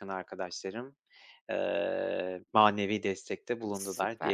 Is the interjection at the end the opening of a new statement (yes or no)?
yes